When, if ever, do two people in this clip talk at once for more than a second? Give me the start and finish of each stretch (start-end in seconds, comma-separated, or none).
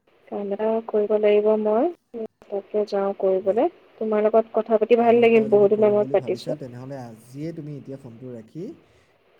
5.0-6.6